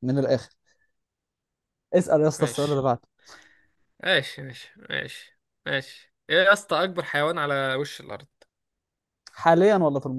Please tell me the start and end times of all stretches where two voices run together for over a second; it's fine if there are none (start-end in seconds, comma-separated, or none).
none